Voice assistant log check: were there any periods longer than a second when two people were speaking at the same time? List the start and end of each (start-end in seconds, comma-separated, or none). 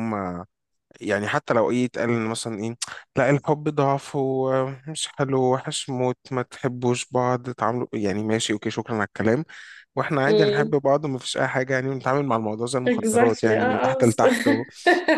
12.8-14.2